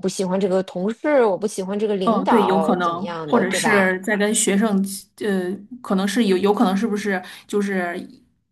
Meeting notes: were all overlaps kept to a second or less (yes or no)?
no